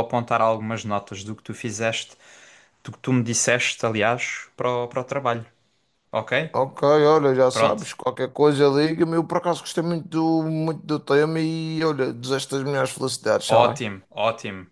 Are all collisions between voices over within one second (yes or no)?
yes